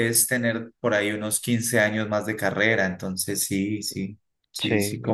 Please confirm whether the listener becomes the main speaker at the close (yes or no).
yes